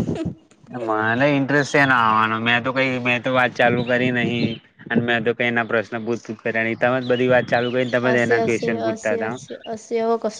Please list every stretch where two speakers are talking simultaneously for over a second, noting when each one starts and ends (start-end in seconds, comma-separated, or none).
8.0-9.3